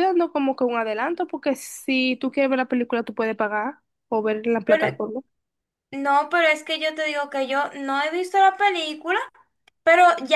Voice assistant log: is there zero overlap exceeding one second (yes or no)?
yes